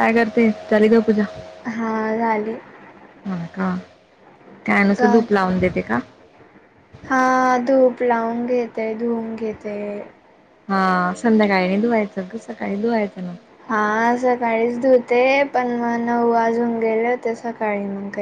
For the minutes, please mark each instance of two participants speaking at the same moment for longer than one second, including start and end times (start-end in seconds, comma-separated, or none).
none